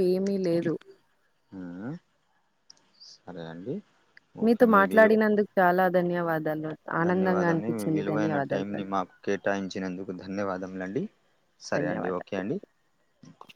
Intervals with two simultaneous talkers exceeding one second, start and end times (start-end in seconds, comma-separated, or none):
7.0-8.9